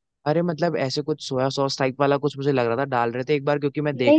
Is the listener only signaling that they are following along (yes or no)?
no